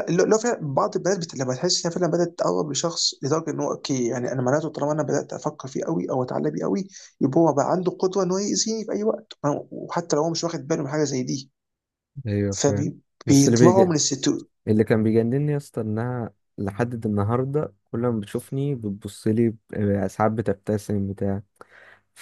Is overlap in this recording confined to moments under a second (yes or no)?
no